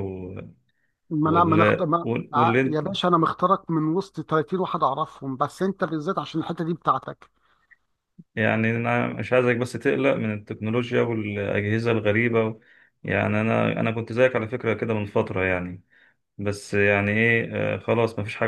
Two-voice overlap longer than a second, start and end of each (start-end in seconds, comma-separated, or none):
1.2-2.9